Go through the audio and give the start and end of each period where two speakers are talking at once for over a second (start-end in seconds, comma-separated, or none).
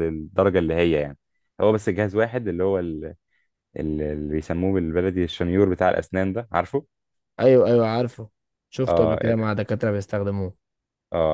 none